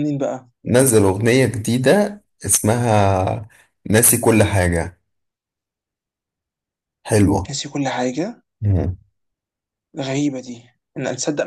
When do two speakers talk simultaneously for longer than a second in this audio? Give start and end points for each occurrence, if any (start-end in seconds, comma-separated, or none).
none